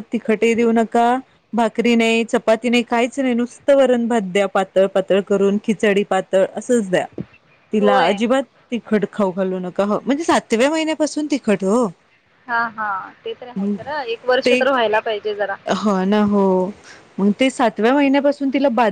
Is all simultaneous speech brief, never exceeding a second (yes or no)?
yes